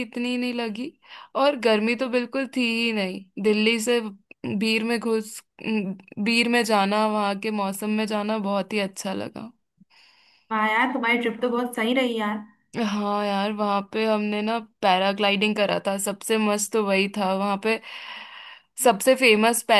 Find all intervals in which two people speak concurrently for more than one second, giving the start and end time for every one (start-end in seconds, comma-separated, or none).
none